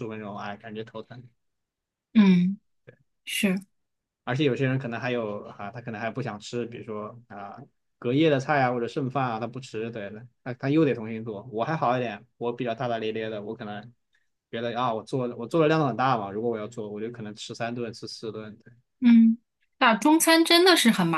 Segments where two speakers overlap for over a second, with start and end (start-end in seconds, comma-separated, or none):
none